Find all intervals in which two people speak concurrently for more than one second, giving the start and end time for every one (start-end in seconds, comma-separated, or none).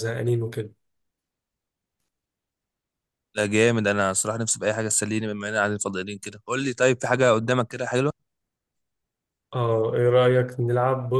none